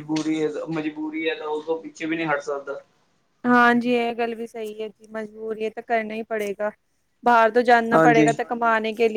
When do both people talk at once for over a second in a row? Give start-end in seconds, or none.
none